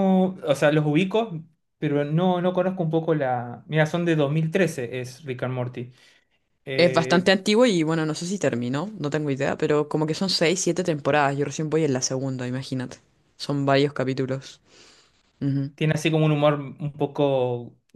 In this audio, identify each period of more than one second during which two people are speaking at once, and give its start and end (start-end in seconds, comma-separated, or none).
none